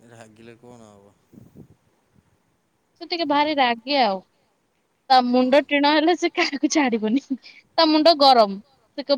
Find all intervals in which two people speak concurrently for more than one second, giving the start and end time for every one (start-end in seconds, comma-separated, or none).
none